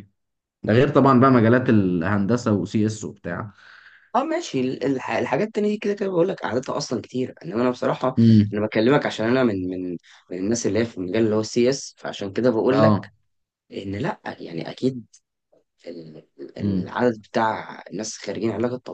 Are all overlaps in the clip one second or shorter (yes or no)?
yes